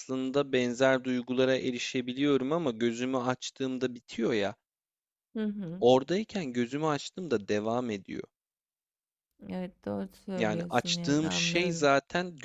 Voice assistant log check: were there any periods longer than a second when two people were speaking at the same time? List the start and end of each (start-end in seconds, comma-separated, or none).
10.4-11.9